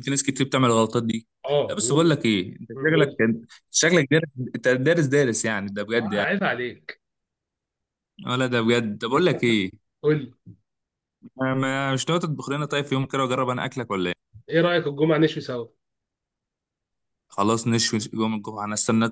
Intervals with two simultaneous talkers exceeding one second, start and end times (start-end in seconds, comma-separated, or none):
none